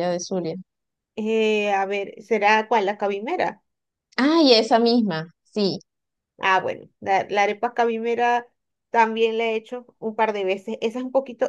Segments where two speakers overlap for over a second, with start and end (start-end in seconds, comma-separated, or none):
none